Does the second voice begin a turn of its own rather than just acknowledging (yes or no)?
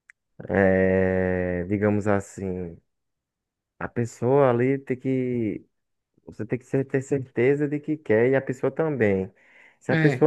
no